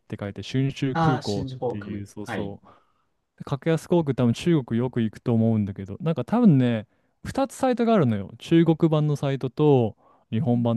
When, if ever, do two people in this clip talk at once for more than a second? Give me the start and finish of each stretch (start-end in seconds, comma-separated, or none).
0.9-2.6